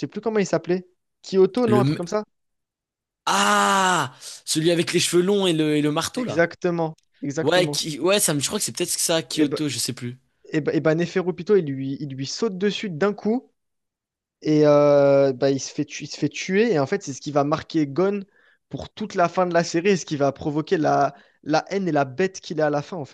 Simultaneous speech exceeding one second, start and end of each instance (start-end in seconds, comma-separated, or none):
none